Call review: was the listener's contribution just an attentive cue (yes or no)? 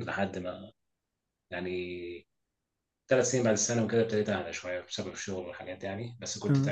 yes